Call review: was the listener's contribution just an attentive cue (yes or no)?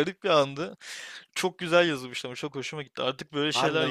no